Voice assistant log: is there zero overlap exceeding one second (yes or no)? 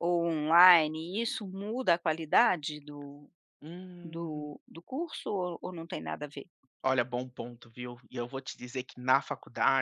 yes